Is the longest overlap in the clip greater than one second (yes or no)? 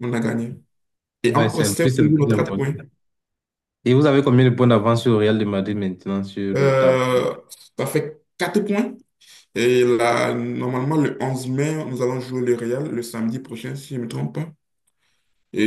yes